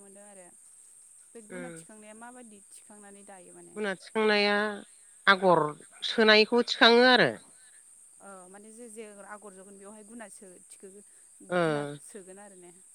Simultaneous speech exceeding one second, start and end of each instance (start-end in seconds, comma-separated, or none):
none